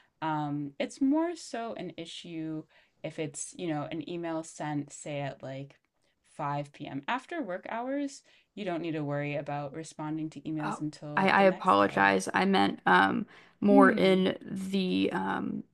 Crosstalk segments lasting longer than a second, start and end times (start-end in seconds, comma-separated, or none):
10.6-12.1